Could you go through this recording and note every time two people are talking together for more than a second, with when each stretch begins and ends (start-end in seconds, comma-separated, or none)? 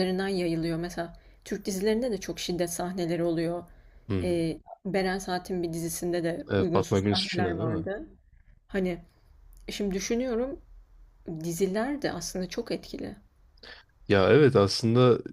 6.5-7.9